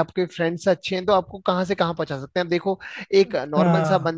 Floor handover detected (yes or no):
no